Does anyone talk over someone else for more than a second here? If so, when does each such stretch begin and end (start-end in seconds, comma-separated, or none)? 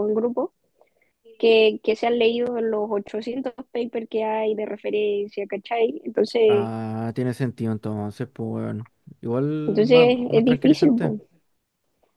9.7-11.1